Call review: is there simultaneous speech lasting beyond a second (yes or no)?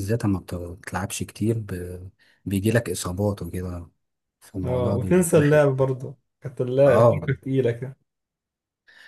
yes